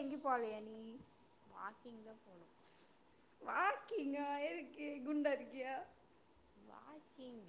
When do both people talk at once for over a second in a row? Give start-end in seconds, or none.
none